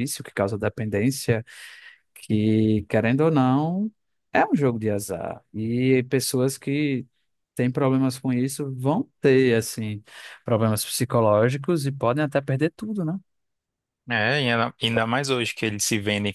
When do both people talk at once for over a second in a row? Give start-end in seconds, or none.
none